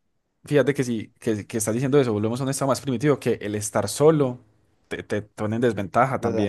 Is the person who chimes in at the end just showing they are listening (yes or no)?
no